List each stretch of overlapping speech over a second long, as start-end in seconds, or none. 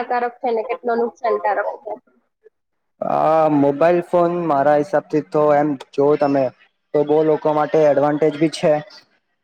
none